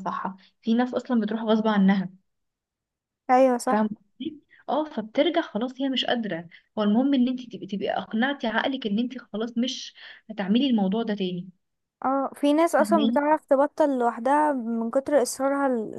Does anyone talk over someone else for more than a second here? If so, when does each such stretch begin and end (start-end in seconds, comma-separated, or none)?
none